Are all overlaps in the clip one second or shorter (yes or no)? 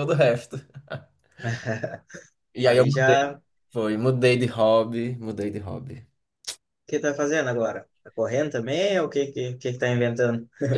yes